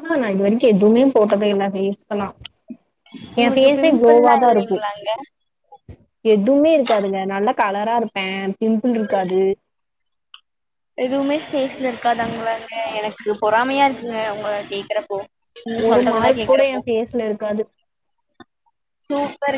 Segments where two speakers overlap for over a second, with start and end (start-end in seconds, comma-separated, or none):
3.4-4.8